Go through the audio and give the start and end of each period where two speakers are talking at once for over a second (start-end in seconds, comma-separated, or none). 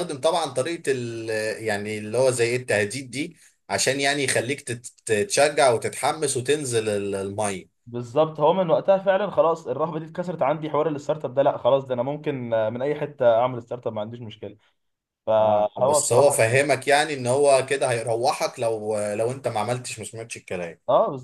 15.4-16.6